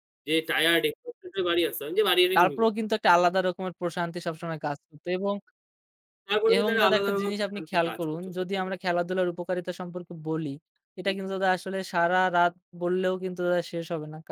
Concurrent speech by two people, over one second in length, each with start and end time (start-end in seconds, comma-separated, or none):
6.5-8.8